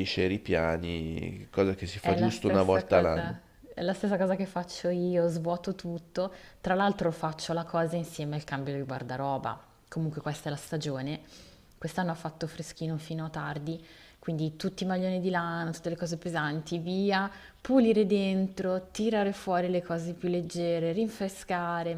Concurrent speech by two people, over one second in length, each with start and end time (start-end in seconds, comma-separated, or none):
2.0-3.4